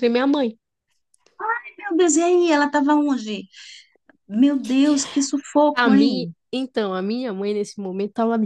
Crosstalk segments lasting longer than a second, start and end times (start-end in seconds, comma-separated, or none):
none